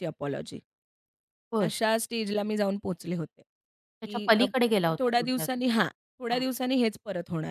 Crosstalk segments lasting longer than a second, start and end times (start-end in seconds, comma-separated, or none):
4.0-5.5